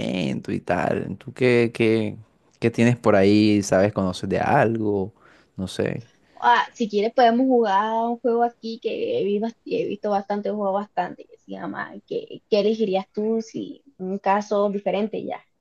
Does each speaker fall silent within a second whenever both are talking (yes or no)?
yes